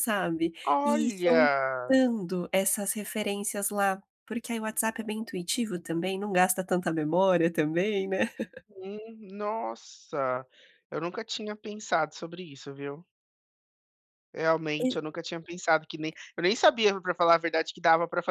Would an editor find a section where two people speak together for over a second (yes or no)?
yes